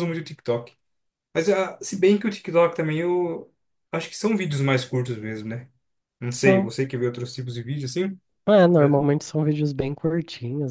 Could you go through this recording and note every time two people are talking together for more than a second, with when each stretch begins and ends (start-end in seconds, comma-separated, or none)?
none